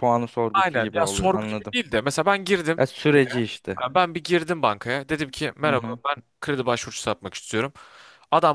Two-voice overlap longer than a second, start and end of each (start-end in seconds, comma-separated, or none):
0.5-1.8